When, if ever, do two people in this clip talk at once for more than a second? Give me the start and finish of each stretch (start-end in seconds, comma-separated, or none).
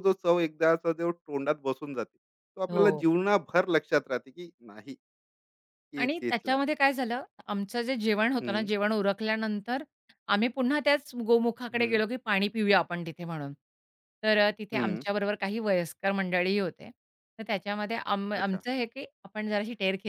none